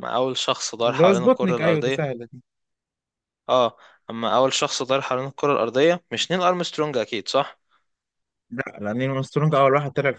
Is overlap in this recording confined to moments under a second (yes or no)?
no